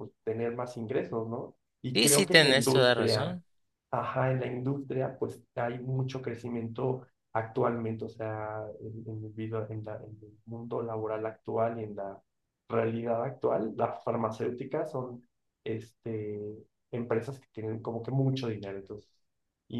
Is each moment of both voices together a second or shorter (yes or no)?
no